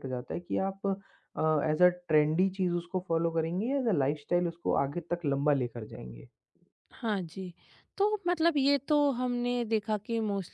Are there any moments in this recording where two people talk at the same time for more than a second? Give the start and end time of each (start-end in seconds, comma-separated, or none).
none